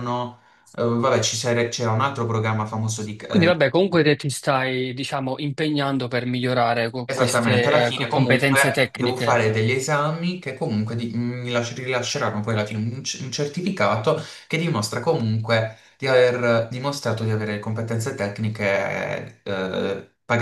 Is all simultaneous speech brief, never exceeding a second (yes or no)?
no